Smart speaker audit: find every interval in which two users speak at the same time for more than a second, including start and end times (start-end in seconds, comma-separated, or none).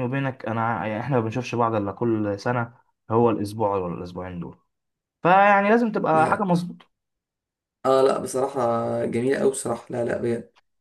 none